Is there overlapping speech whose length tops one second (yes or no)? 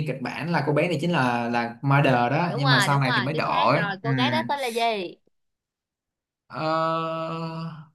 yes